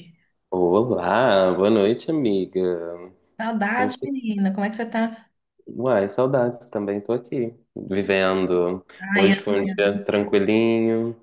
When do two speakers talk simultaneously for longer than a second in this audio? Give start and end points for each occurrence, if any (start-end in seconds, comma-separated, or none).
none